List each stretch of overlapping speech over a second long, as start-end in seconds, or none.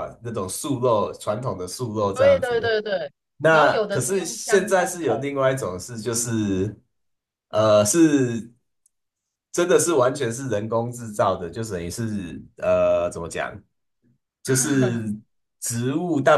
3.5-5.3